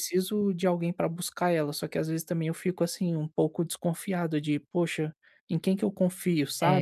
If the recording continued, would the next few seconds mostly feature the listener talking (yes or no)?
yes